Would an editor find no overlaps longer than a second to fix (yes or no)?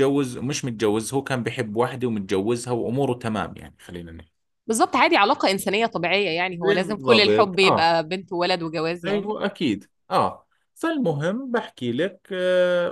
no